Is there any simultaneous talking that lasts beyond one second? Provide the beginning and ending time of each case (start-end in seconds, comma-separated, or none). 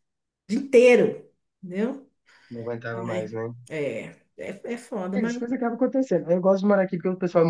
none